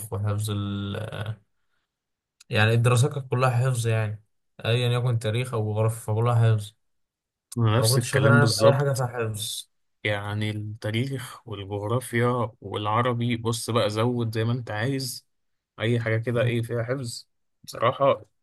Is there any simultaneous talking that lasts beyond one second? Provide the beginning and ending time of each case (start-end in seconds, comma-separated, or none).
7.8-9.0